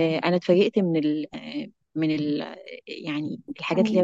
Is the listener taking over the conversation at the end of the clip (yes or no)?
yes